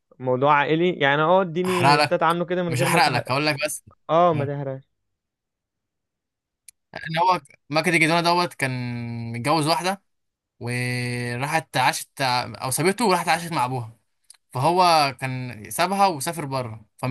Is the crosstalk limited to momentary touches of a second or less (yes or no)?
no